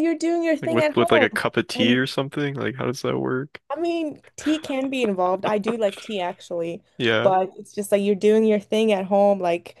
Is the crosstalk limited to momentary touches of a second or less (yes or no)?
no